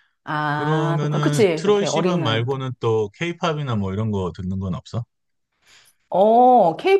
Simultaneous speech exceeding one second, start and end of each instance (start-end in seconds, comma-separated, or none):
0.5-2.6